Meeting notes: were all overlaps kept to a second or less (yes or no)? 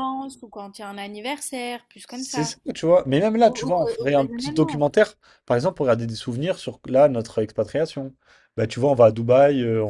no